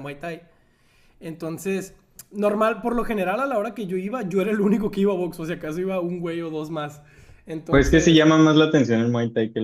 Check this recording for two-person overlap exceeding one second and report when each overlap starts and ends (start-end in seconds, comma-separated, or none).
none